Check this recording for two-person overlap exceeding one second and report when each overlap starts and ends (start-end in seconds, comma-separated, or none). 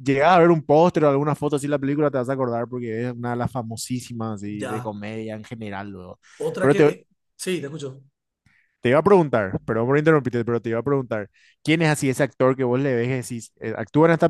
none